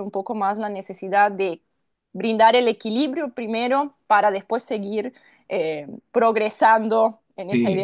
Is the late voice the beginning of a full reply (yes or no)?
yes